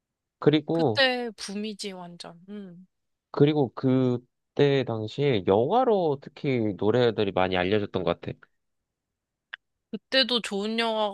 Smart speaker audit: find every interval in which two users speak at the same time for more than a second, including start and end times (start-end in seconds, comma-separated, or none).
none